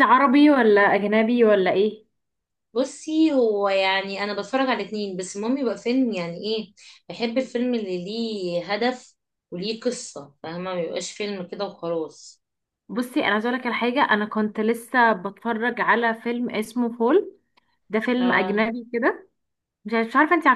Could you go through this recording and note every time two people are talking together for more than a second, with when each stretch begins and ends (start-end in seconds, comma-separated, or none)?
none